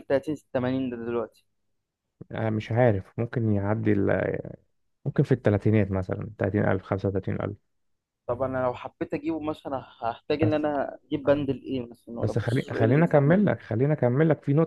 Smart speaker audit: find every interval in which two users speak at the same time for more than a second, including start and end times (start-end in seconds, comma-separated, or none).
12.2-13.4